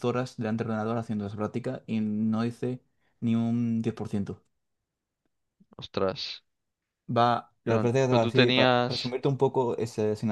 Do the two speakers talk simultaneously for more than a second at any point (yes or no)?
yes